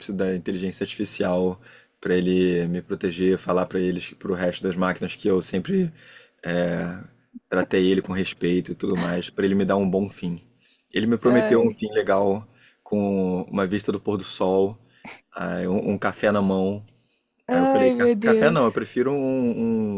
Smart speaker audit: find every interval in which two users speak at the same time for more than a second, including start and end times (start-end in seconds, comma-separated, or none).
17.5-18.8